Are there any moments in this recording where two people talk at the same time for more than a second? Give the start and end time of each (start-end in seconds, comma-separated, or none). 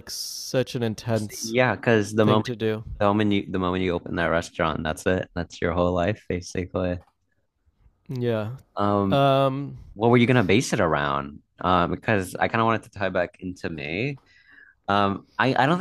none